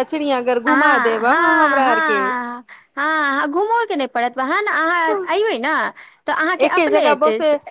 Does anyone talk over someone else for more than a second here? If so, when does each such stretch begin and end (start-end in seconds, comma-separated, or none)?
0.7-2.1